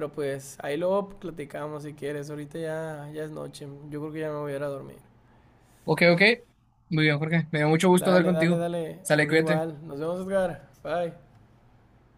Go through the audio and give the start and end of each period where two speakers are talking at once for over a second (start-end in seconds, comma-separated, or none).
8.0-9.6